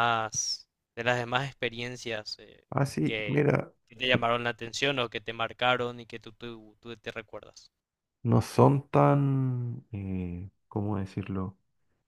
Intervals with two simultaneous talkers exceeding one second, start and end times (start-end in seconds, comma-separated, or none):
none